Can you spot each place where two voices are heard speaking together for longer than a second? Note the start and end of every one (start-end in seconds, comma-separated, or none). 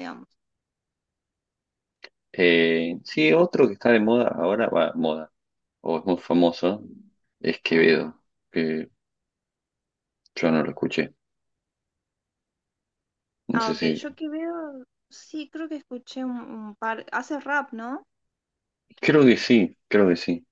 none